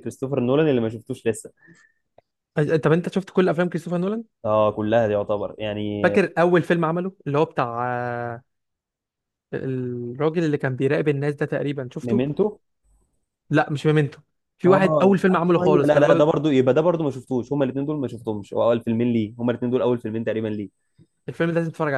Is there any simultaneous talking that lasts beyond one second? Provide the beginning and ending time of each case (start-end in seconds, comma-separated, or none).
14.7-16.2